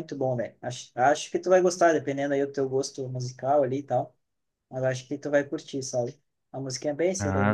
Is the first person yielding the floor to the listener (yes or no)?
yes